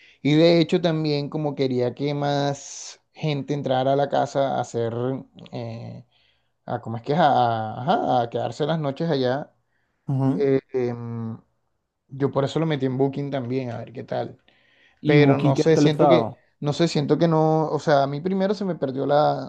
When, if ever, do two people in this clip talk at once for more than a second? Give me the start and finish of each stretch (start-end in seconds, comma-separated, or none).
15.1-16.4